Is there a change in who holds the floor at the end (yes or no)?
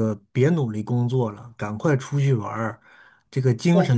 no